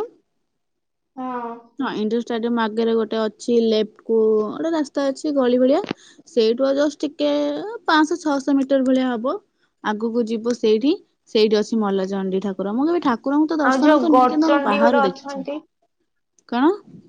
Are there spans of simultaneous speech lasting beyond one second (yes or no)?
yes